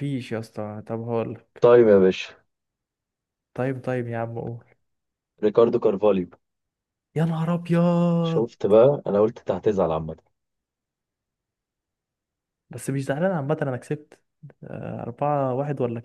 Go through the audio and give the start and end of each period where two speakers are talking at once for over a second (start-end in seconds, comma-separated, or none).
none